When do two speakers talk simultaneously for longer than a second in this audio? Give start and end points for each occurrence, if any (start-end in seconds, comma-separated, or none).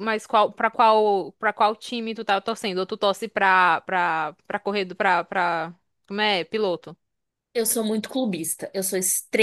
none